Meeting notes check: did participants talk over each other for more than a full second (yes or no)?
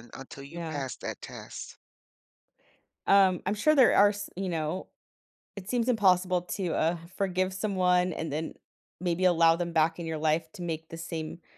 no